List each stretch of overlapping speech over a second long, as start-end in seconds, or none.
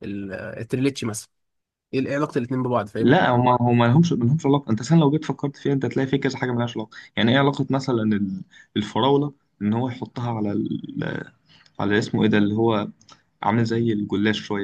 none